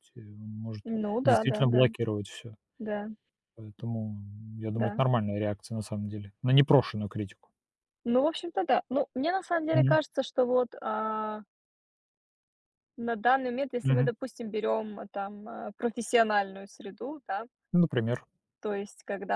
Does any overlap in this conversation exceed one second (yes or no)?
no